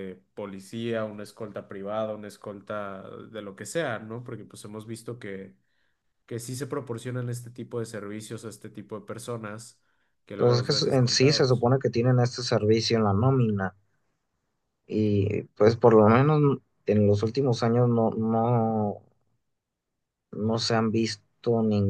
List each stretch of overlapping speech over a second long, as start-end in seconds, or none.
10.4-11.7